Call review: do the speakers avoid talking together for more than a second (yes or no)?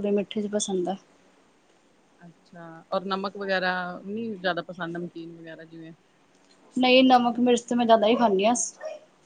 yes